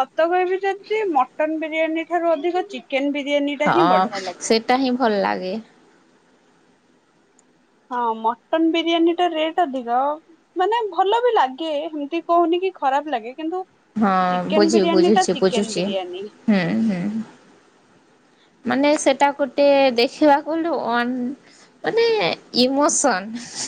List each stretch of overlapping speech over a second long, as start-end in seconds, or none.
14.6-16.2